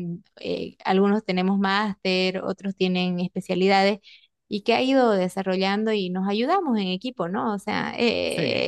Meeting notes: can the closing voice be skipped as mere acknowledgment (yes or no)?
yes